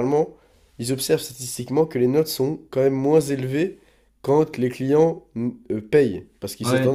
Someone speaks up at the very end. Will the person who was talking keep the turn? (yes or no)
no